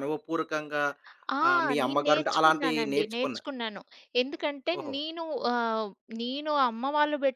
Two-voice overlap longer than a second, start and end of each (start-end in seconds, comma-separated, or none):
1.8-3.4